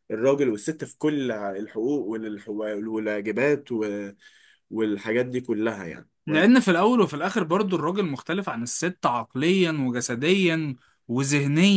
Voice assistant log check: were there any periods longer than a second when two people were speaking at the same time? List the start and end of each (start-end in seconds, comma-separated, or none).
none